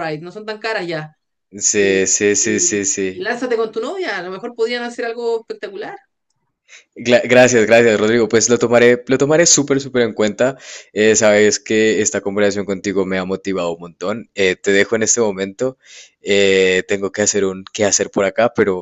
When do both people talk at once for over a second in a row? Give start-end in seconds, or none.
1.8-3.3